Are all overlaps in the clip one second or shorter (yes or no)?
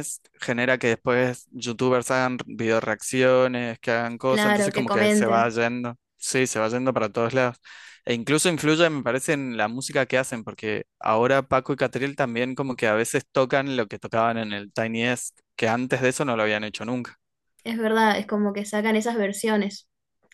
no